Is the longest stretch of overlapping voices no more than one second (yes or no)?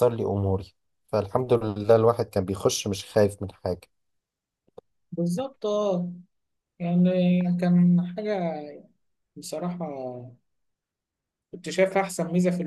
yes